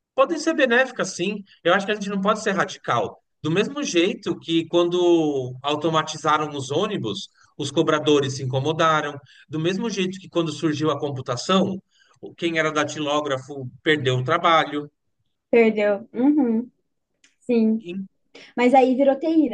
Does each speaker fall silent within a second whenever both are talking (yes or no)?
yes